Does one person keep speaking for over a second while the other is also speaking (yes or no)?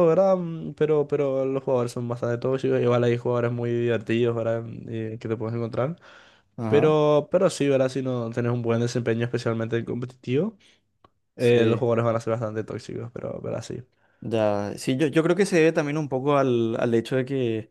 no